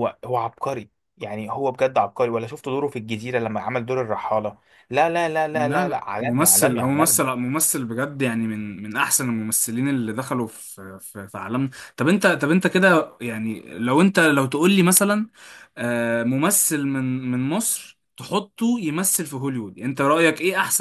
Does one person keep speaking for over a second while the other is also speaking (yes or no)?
yes